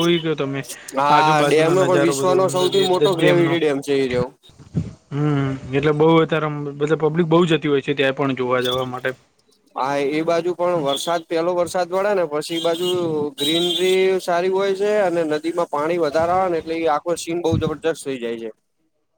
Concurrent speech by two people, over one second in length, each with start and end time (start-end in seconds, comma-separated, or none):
1.1-3.5